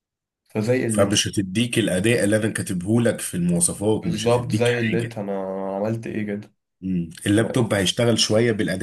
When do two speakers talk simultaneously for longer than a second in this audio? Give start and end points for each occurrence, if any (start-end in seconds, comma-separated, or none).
4.0-5.2